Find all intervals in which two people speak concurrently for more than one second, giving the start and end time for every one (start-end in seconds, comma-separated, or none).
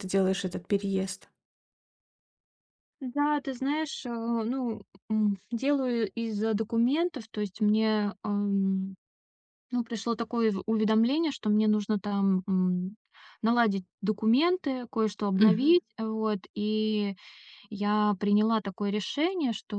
none